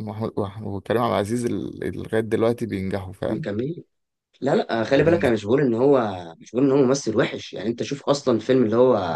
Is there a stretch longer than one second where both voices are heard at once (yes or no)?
no